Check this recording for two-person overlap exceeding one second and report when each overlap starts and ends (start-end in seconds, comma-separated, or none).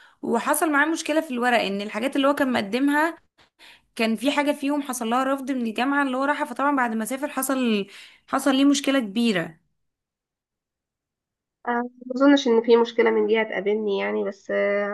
none